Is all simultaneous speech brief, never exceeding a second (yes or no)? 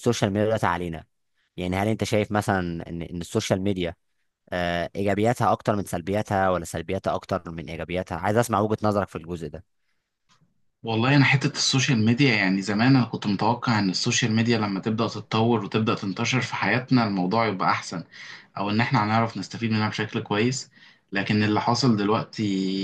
yes